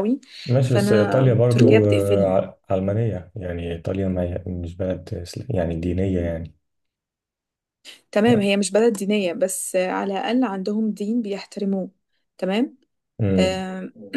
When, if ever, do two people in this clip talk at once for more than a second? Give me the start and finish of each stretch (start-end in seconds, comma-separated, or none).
0.6-2.4